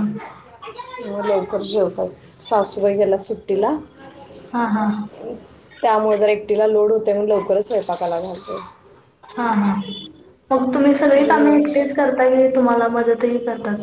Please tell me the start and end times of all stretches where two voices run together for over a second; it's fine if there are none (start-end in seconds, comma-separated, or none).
none